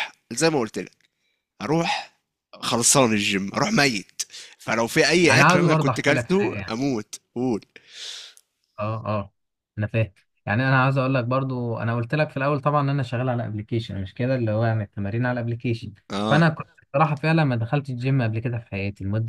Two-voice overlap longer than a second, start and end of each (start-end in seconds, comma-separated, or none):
5.3-6.8